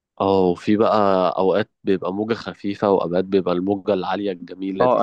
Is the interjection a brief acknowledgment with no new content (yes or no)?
no